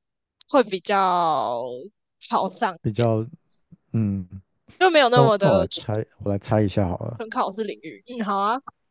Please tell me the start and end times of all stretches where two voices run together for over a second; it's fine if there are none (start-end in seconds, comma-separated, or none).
none